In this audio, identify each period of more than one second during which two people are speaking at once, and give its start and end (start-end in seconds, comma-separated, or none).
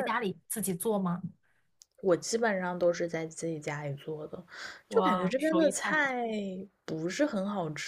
4.9-6.1